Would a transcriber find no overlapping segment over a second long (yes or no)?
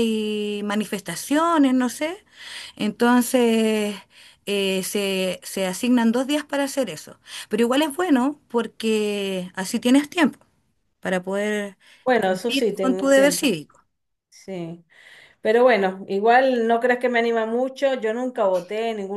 no